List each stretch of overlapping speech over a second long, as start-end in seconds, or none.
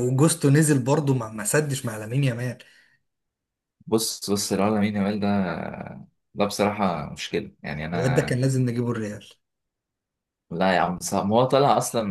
none